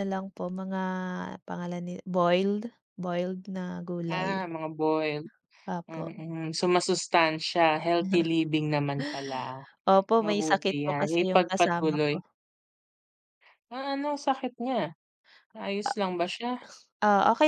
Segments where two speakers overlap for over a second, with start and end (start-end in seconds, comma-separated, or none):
10.2-12.1